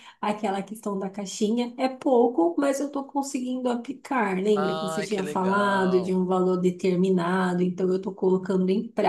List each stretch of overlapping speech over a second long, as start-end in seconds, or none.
4.5-6.3